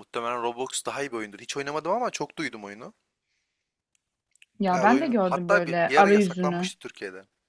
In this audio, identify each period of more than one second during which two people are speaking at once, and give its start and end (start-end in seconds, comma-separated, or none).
4.7-6.7